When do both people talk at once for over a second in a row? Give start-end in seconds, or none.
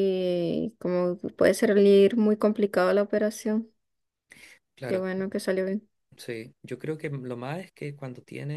none